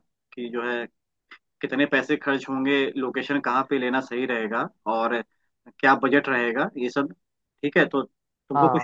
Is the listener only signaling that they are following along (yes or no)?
yes